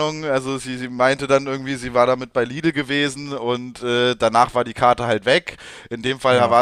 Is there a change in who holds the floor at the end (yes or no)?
no